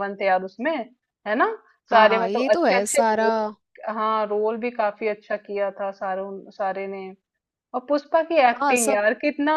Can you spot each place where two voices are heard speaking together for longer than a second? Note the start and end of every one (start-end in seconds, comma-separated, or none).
1.9-3.3